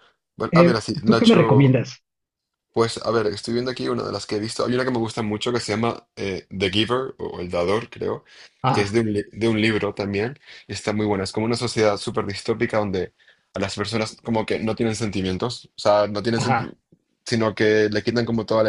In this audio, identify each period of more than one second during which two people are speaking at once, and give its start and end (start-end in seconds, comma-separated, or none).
0.5-1.9